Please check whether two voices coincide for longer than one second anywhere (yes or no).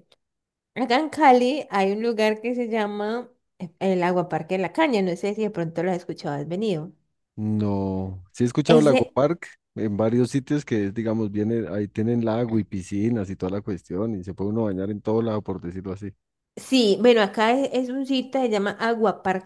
no